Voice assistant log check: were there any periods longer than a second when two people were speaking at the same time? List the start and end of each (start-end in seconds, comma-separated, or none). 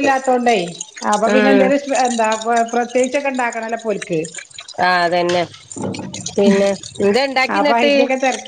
none